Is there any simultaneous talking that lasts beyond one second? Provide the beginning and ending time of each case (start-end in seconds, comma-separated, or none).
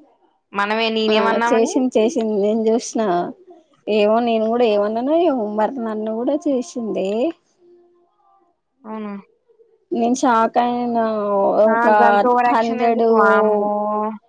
none